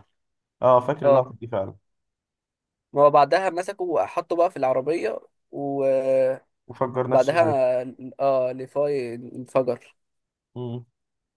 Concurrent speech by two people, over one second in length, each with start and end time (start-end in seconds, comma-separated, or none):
none